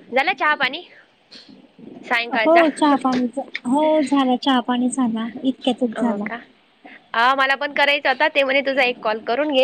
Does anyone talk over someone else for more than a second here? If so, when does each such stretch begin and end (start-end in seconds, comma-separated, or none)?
none